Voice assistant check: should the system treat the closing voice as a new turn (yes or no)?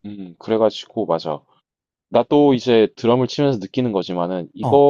no